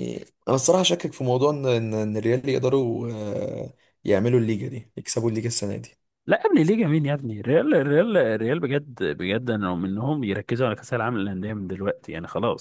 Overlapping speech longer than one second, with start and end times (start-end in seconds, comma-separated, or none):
none